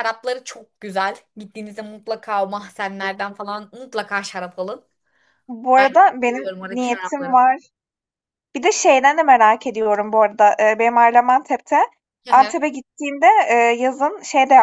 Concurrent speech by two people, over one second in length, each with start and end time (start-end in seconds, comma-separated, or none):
5.8-7.4